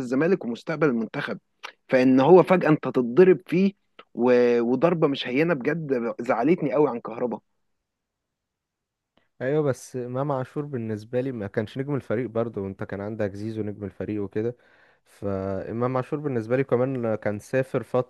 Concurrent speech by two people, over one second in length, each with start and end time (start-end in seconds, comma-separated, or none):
none